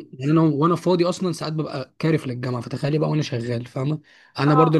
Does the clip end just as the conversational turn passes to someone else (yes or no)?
no